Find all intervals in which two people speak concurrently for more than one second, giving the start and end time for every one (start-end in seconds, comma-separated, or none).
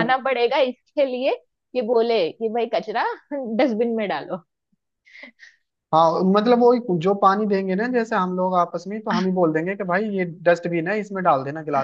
none